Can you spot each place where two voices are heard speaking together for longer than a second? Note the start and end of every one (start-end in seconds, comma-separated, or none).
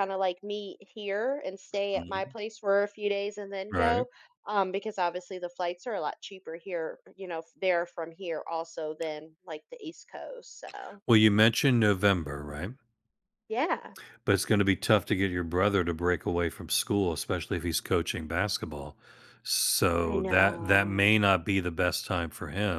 20.0-21.2